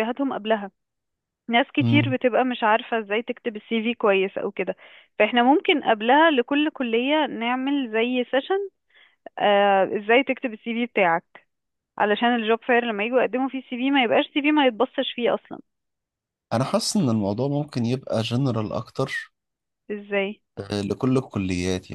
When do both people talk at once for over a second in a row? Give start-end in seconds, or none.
none